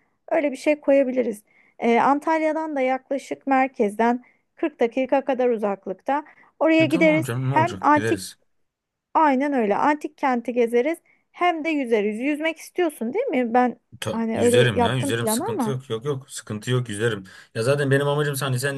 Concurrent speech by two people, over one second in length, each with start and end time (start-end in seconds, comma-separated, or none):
6.8-8.2, 14.0-15.8